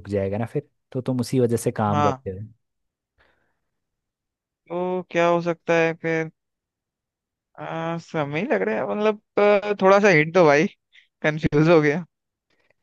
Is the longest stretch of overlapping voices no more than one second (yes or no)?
yes